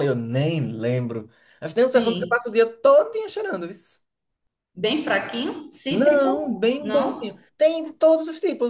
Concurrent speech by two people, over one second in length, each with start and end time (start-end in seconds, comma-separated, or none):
5.9-7.4